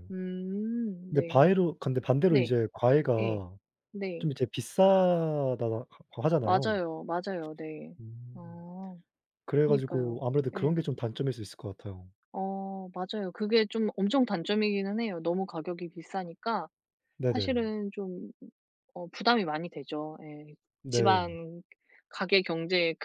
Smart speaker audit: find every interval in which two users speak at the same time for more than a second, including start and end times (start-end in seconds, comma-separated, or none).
9.6-10.9